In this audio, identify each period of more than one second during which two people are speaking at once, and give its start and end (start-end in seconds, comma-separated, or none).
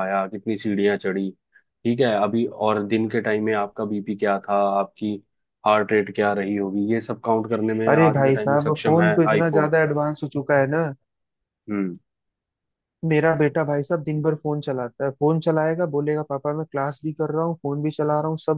7.9-9.7